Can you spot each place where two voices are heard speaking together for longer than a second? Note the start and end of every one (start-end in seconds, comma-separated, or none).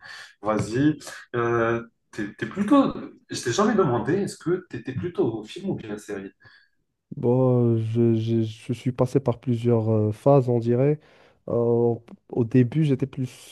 none